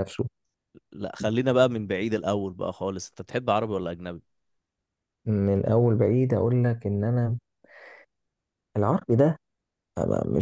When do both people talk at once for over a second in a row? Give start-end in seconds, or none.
none